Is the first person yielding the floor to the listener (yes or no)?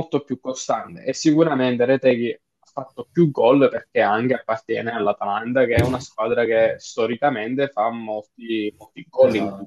yes